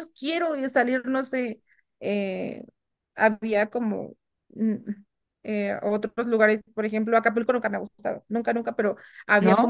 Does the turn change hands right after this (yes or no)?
no